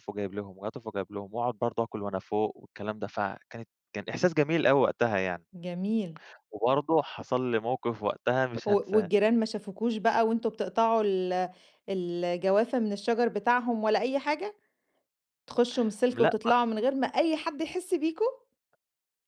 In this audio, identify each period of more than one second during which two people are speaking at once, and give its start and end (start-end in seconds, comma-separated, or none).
none